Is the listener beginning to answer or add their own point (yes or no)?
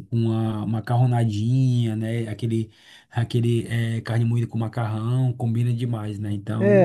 yes